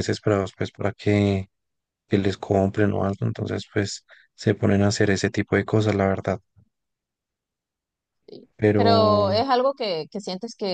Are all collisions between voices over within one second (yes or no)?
yes